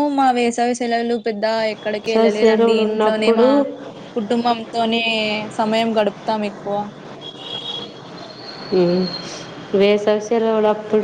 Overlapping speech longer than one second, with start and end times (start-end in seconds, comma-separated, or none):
2.0-3.5